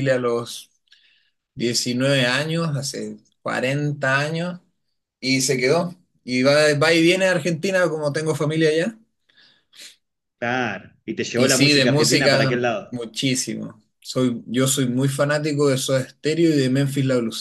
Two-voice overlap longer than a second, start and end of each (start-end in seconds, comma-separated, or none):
11.3-13.0